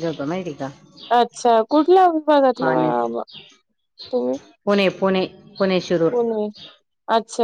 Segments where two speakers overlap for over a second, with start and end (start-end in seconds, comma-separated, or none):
none